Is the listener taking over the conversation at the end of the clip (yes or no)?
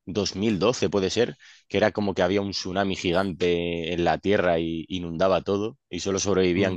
no